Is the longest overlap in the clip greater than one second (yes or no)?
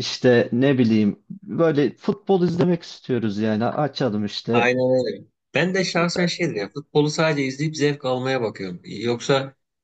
no